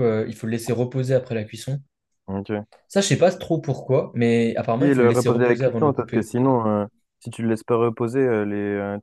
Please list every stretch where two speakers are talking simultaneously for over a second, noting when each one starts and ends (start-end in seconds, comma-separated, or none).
4.8-6.3